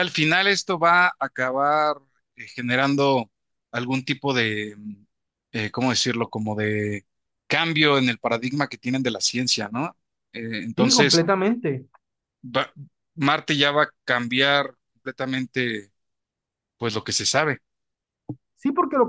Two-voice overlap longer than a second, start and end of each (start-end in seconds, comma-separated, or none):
none